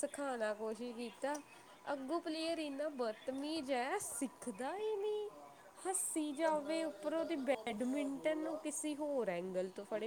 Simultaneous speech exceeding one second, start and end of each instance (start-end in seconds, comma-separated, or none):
6.4-8.6